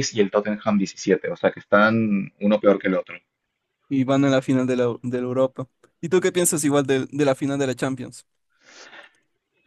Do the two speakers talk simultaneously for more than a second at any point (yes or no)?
no